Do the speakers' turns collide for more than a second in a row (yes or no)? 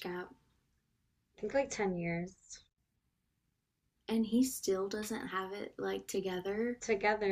no